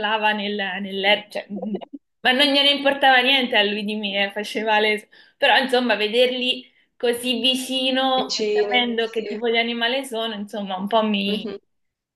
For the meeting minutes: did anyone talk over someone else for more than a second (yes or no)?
yes